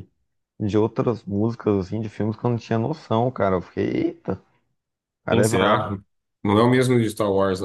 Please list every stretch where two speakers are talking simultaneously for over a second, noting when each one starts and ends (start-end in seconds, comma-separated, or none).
none